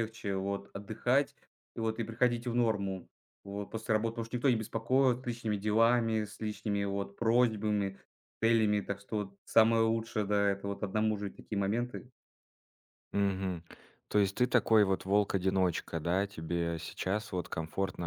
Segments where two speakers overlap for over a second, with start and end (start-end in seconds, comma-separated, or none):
none